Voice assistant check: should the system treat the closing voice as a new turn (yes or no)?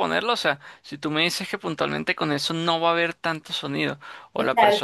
no